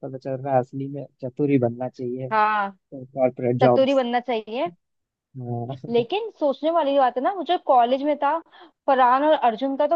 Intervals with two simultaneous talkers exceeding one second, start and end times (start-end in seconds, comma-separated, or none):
none